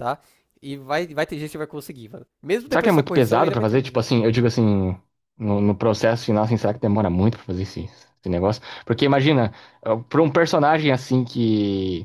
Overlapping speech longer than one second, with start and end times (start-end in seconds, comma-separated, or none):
2.7-4.1